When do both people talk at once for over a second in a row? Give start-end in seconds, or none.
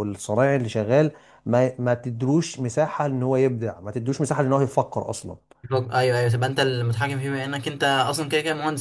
none